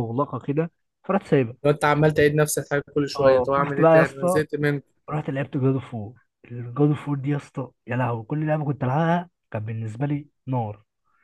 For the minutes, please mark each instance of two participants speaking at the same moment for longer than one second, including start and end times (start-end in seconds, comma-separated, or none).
3.2-4.4